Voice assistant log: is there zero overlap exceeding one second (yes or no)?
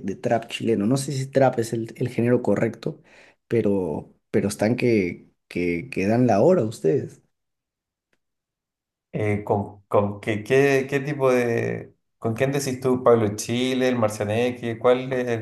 yes